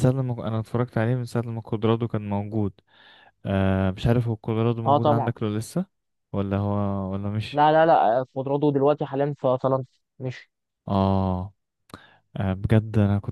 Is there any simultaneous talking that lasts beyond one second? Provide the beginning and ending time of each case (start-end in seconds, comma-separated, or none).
none